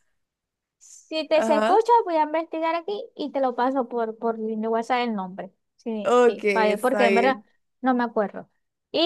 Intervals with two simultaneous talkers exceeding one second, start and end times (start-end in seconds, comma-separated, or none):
6.0-7.4